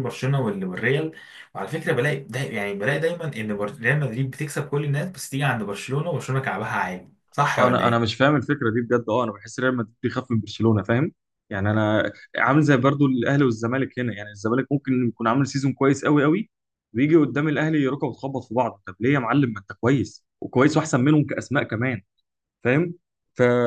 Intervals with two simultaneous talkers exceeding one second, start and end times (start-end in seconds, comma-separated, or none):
none